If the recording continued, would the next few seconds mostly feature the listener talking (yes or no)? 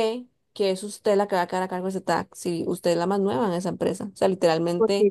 no